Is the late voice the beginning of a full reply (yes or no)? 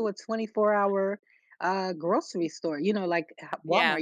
no